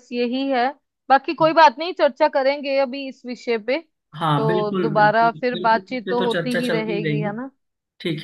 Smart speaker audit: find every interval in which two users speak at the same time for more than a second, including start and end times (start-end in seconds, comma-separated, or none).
4.4-7.3